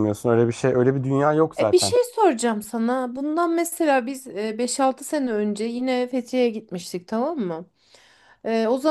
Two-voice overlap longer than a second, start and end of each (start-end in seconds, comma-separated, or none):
none